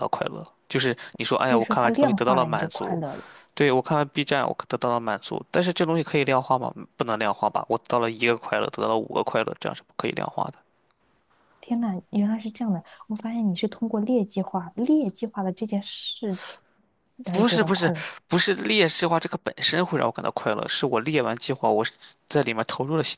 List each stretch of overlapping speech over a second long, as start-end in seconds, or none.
1.4-3.0